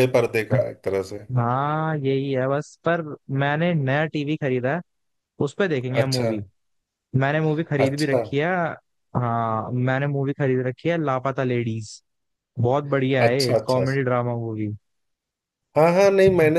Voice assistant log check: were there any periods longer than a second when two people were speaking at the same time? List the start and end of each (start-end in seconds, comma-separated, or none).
none